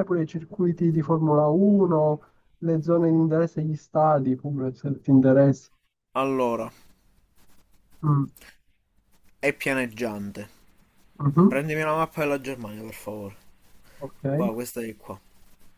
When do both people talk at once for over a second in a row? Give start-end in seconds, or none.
none